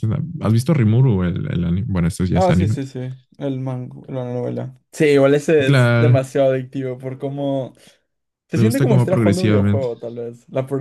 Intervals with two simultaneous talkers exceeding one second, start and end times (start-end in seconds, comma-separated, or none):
8.5-9.9